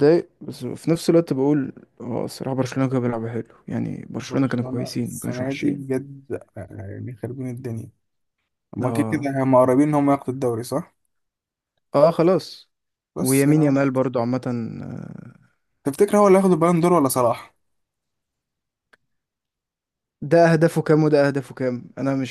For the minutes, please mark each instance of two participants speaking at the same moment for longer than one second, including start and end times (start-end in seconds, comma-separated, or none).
4.3-5.8